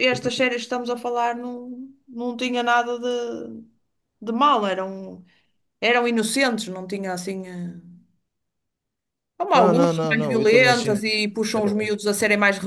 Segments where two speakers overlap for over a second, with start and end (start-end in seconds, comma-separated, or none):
9.5-11.0